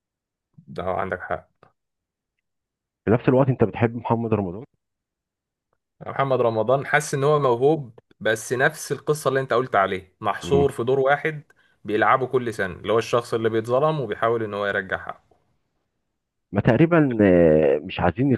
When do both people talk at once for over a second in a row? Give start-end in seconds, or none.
none